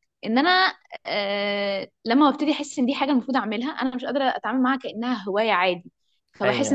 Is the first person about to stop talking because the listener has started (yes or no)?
no